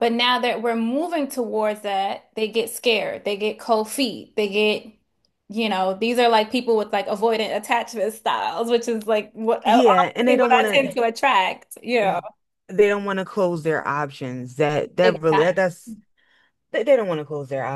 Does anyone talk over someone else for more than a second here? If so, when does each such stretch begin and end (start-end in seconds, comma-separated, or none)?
9.6-10.9